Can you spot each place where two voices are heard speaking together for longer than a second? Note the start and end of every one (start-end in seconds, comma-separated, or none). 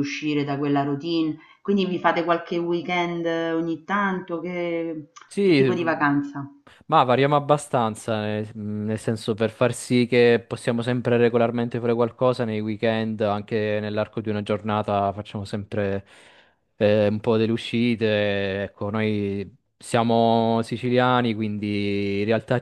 none